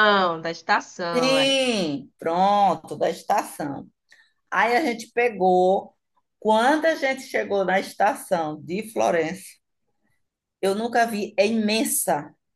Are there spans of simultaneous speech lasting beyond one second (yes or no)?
no